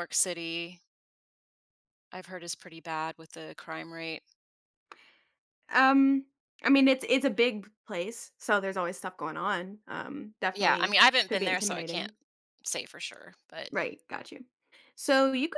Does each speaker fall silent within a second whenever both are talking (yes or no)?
no